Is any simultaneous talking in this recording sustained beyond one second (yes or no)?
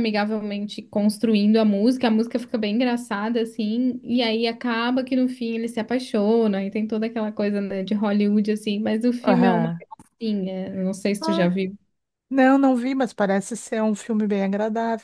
no